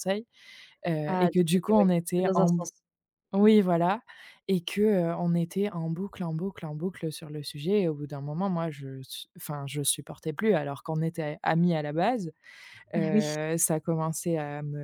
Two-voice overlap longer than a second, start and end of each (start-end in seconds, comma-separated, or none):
1.1-2.6